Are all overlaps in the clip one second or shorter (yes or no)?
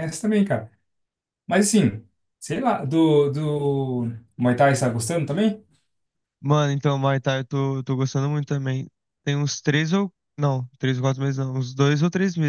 yes